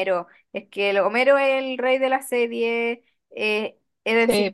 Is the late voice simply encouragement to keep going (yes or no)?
yes